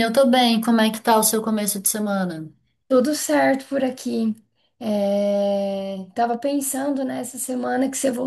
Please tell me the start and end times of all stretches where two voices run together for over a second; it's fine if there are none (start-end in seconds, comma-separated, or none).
none